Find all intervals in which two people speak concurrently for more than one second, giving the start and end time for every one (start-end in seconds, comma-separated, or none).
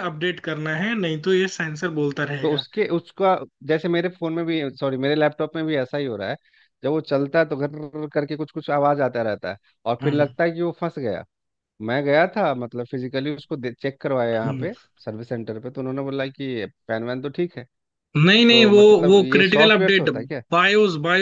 18.5-20.1